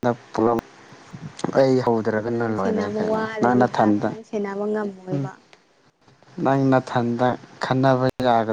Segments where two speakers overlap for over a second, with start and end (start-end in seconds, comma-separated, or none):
2.2-4.1